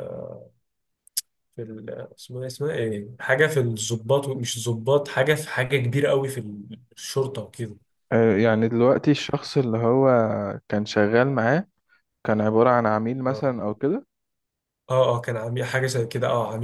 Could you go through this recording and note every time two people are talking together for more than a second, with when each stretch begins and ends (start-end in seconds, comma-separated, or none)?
none